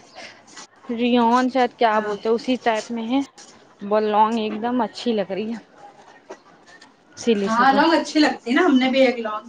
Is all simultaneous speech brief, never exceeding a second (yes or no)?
yes